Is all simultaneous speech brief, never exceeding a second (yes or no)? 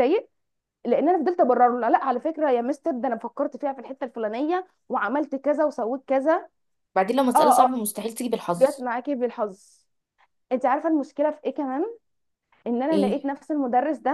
yes